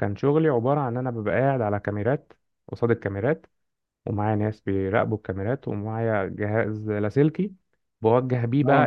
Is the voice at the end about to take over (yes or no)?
no